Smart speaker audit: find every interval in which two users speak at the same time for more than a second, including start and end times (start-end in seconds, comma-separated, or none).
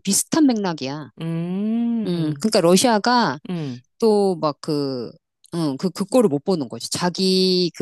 none